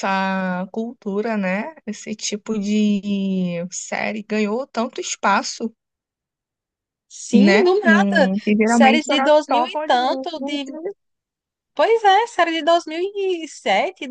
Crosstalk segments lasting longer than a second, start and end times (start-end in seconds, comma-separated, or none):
7.3-10.3